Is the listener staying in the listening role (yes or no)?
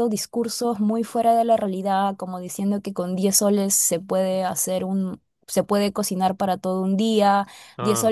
yes